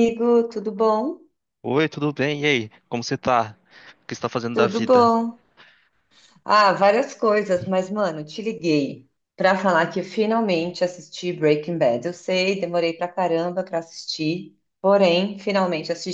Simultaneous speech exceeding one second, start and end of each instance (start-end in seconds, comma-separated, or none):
none